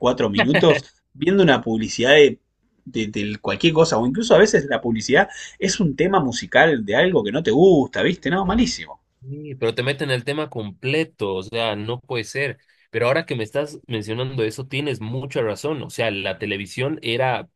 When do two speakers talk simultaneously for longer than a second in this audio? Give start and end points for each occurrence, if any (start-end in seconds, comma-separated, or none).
none